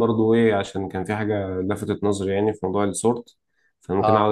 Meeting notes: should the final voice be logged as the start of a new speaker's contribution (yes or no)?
no